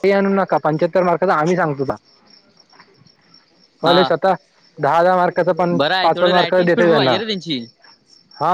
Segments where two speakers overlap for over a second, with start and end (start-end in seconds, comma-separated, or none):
5.8-7.2